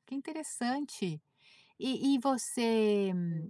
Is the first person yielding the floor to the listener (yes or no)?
no